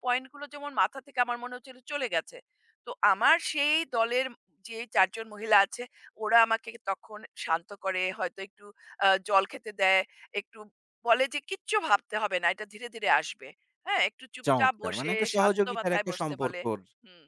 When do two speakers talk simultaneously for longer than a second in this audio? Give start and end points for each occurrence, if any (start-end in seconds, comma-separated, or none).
14.5-16.6